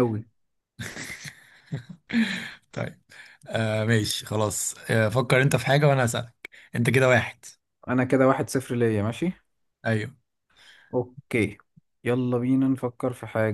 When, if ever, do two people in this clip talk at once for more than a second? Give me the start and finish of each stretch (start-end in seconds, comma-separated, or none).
none